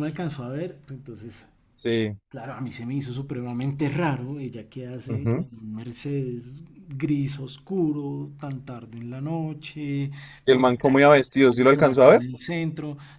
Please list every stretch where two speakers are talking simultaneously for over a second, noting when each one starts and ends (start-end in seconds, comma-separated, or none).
none